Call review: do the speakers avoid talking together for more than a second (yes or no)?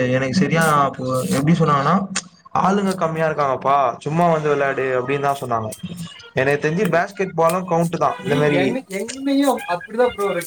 yes